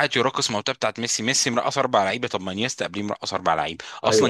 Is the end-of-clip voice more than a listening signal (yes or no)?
no